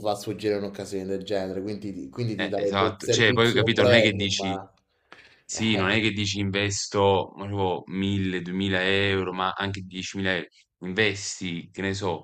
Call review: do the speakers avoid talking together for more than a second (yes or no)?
no